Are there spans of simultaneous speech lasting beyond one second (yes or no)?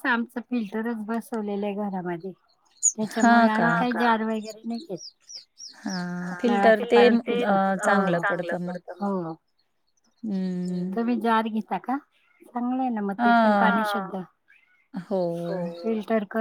no